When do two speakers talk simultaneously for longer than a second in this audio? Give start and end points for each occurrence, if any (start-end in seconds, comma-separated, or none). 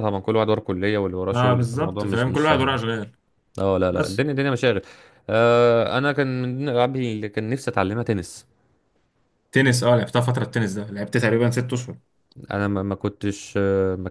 1.3-2.8